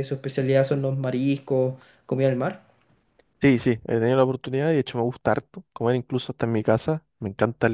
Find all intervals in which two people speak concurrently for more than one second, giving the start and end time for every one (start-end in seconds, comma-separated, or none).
none